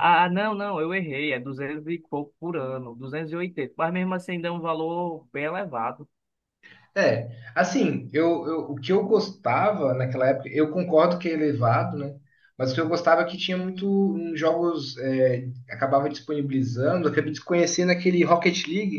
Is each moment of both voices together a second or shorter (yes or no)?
yes